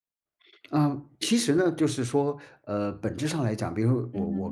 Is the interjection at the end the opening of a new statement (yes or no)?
no